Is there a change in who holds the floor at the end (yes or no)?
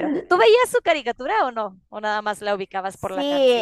yes